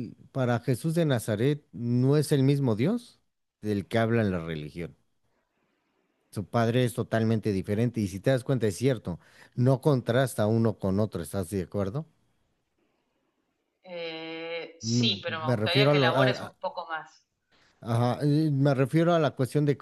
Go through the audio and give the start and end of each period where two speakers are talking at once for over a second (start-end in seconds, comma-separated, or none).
14.8-16.5